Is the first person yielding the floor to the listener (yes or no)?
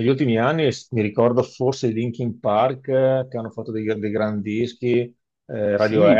yes